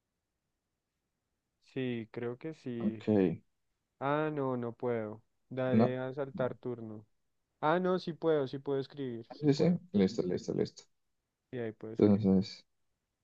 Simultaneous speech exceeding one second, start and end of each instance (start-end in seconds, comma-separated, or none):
none